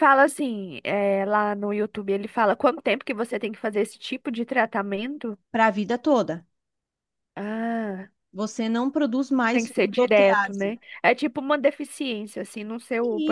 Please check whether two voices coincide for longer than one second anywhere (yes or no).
yes